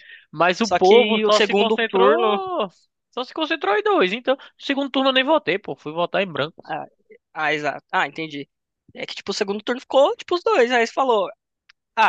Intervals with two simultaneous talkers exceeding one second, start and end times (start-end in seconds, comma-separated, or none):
0.6-2.4